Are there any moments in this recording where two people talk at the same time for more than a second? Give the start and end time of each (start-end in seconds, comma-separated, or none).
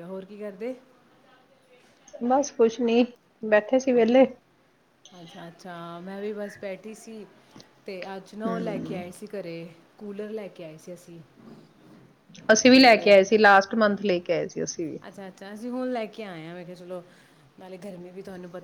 none